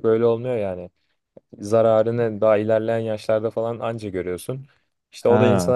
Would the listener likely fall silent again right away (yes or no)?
yes